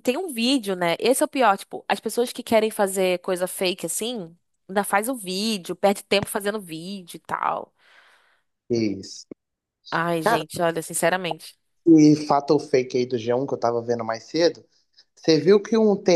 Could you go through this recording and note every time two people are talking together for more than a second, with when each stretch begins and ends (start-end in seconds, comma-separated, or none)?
none